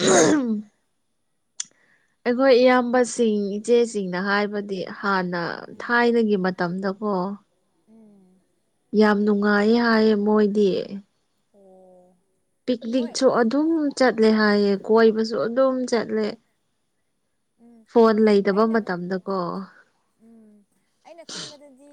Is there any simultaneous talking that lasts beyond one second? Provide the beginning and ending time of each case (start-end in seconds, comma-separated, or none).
none